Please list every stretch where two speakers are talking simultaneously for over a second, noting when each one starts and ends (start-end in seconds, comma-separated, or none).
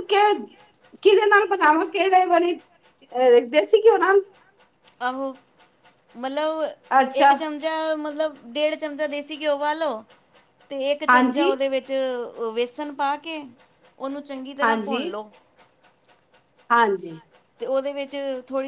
none